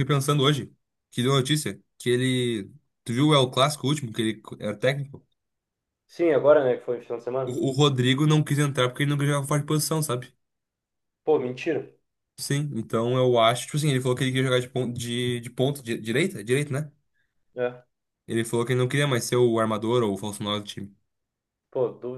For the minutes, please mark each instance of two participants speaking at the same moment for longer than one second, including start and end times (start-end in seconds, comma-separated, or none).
none